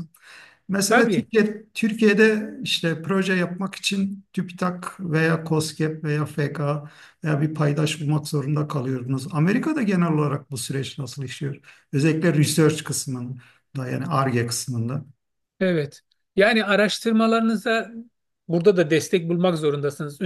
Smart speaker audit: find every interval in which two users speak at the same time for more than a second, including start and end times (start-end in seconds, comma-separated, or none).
none